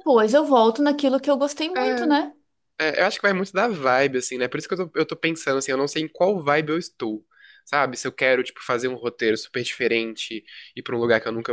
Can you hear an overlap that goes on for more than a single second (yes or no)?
no